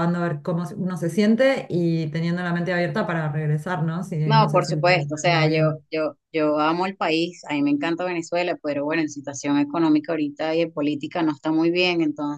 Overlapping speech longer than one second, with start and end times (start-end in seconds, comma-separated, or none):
4.2-5.8